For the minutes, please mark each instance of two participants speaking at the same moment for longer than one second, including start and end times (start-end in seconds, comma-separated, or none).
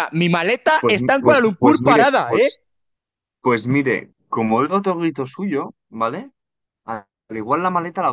0.8-2.5